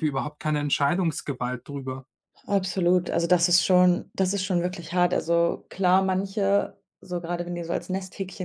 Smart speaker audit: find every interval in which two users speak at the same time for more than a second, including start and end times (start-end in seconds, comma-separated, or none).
none